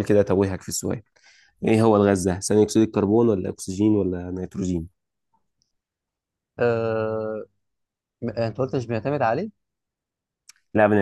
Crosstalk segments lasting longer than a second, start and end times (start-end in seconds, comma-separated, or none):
none